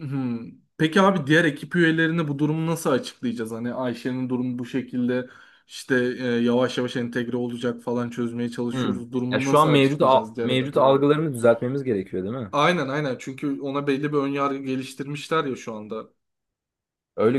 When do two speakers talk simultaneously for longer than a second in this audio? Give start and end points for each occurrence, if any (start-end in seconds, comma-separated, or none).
8.7-11.0